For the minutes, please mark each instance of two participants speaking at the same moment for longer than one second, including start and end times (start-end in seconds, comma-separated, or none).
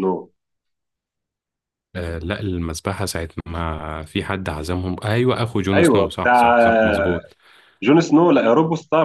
5.7-7.2